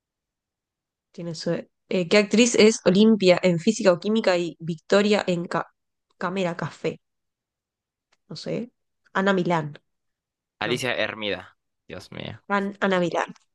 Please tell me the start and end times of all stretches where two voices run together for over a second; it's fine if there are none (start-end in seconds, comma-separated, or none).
none